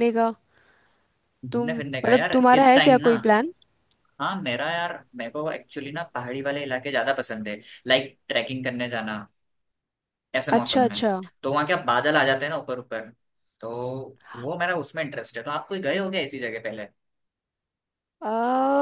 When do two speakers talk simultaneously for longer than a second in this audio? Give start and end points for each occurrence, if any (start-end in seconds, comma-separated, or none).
1.5-3.1